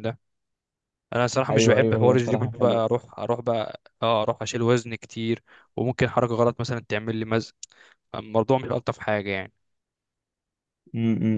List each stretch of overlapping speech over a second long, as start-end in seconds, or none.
1.5-2.8